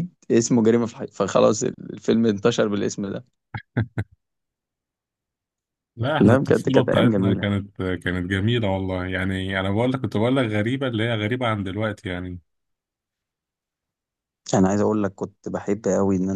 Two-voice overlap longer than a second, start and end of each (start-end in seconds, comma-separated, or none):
6.2-7.5